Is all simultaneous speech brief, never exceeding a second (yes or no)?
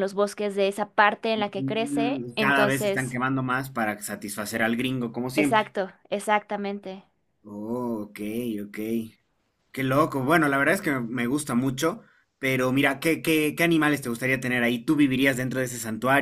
no